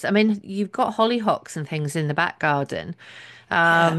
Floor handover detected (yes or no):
no